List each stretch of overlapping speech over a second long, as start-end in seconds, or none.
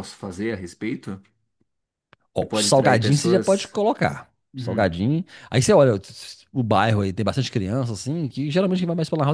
2.4-3.8